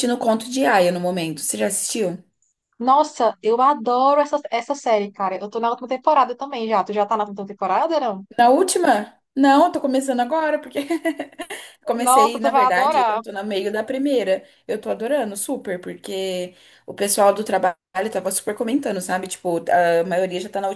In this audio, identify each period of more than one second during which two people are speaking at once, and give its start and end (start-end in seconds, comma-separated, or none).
12.0-13.2